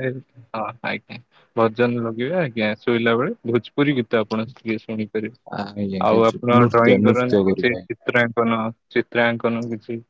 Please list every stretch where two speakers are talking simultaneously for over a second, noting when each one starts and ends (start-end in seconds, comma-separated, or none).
6.1-7.7